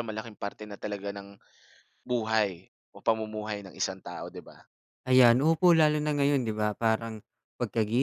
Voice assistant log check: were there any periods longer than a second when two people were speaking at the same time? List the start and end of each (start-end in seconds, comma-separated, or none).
none